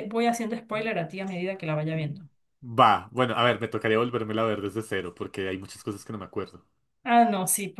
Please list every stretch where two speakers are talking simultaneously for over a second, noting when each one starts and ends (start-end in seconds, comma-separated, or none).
none